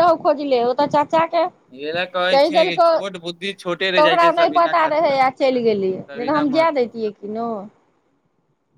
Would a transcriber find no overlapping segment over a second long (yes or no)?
no